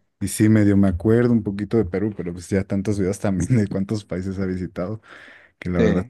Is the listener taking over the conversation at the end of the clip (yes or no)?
no